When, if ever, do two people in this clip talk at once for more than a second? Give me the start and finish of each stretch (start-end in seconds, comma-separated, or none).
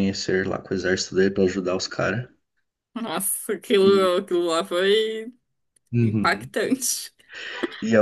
none